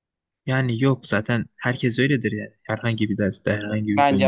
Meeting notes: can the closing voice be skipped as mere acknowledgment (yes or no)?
no